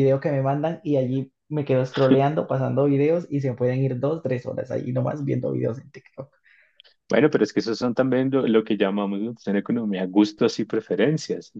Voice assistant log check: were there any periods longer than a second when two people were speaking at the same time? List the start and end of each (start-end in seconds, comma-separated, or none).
none